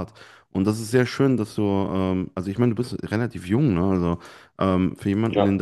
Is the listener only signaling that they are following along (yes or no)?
yes